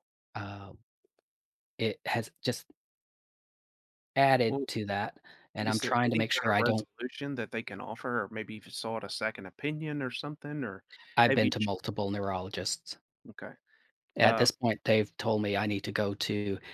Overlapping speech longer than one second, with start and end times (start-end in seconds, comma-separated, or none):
5.6-6.9